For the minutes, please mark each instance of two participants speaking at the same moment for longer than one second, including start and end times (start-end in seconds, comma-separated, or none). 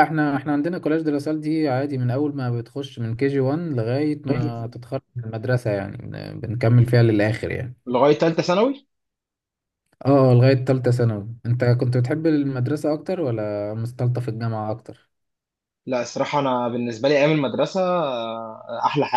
none